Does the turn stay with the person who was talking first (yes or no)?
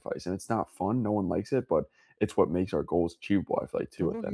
no